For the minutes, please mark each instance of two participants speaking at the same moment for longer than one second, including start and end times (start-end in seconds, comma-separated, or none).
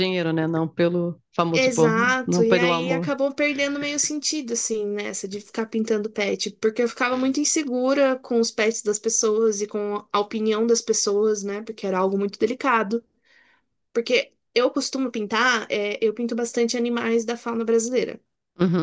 1.5-3.1